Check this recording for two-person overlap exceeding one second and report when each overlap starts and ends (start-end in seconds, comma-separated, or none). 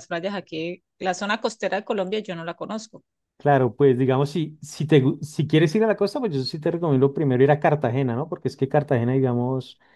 none